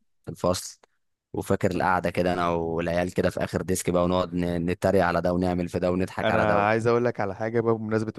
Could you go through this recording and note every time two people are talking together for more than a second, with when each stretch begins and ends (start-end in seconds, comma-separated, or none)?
none